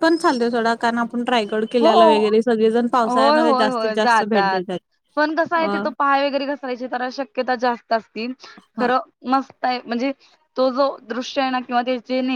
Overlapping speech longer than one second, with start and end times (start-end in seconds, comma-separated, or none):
3.0-4.6